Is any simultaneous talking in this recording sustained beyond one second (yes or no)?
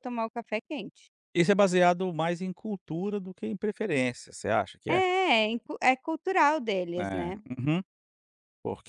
no